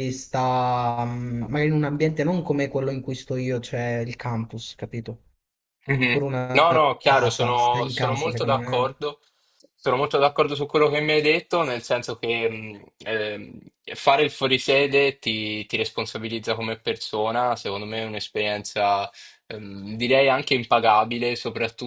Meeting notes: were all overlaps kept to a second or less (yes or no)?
no